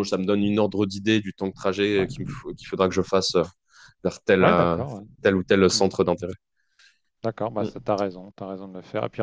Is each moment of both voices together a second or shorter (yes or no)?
yes